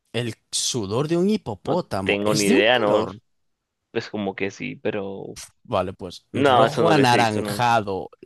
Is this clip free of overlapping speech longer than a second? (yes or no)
no